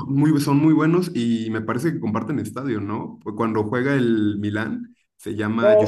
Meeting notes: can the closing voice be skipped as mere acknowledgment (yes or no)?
no